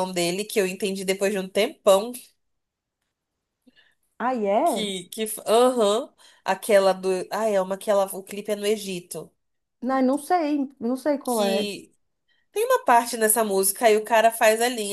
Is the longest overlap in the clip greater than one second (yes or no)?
no